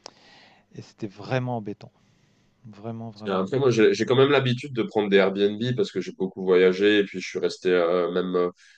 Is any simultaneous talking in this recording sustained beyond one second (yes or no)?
no